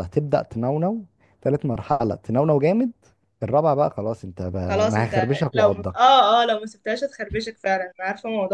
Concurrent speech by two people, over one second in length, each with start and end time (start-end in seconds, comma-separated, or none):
4.6-6.2